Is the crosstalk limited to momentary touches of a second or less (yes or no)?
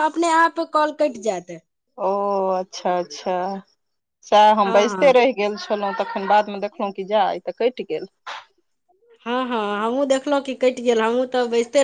yes